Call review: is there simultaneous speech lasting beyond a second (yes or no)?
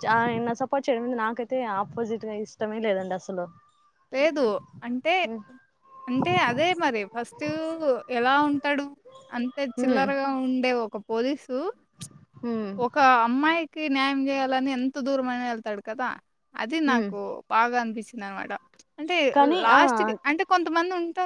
no